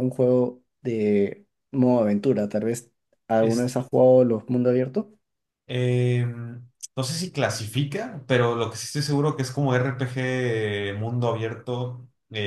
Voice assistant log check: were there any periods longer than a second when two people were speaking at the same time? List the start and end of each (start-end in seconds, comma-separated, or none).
none